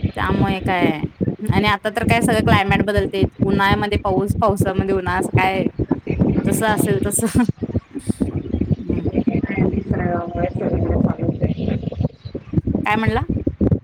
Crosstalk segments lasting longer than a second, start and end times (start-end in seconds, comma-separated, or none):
none